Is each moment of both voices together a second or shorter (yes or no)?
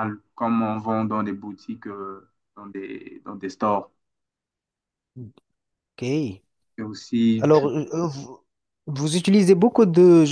yes